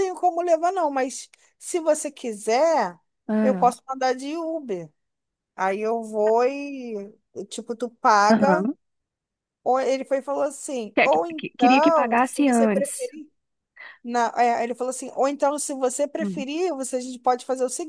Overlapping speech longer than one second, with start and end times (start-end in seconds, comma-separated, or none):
10.9-13.1